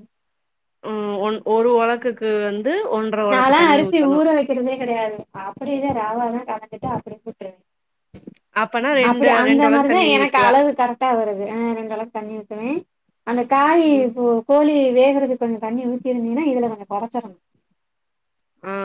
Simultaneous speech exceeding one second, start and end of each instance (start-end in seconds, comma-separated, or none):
none